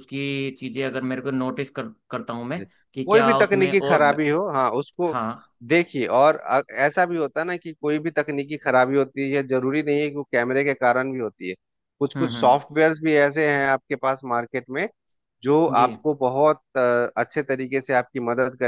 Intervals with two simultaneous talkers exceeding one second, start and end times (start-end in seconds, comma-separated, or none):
2.6-4.2